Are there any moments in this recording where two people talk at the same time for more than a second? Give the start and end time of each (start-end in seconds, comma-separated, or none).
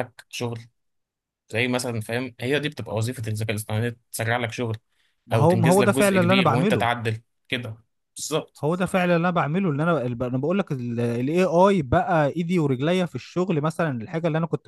5.3-6.9